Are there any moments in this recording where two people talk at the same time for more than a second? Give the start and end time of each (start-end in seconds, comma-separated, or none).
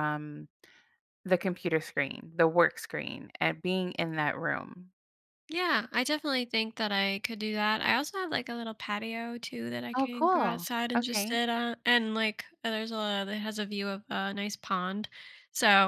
9.9-11.4